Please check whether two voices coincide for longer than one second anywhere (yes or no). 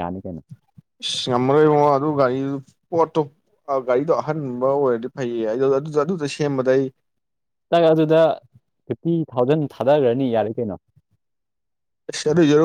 no